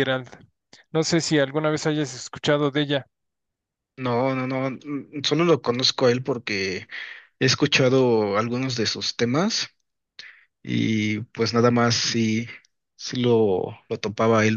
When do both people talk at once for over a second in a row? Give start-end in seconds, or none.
none